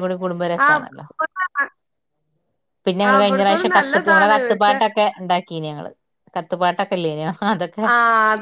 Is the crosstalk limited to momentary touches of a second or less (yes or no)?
no